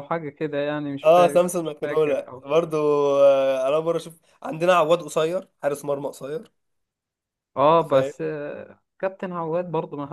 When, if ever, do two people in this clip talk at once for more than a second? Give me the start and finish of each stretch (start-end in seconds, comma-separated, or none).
1.0-2.5